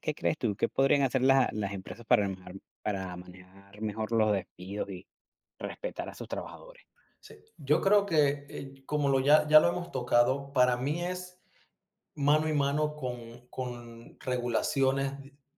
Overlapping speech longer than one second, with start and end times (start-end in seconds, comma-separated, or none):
none